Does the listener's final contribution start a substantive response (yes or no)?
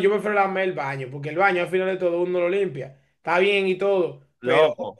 no